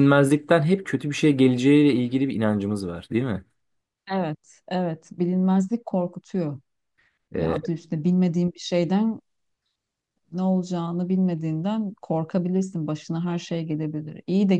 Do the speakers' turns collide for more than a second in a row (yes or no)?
no